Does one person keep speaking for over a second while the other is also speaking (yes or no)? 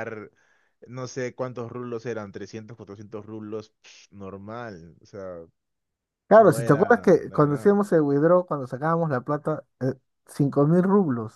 yes